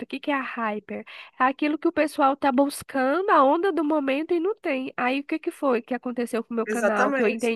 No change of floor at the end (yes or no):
yes